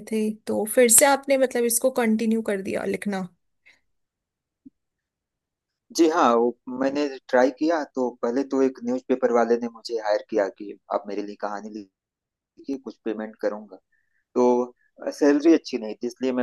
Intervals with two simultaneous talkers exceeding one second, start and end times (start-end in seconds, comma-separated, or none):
none